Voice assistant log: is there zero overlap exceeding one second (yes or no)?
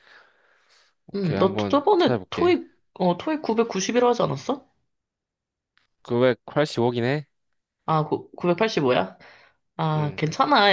no